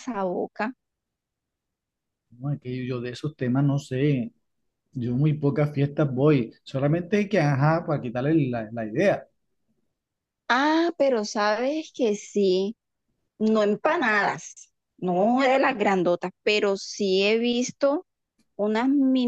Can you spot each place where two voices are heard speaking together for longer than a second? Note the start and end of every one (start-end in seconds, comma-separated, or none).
none